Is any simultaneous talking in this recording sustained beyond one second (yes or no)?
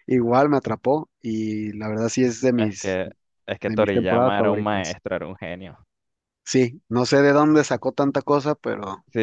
yes